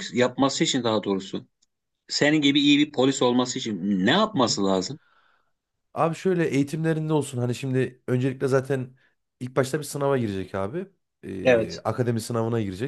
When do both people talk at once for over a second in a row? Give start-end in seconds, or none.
none